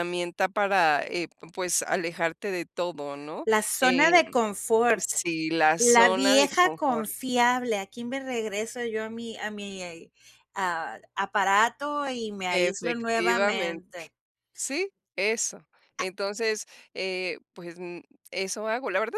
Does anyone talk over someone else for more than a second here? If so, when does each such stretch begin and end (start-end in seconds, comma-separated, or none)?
5.8-7.1, 12.5-13.8